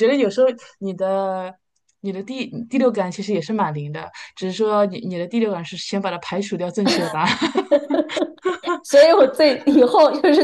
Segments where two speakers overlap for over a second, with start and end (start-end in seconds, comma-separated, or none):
none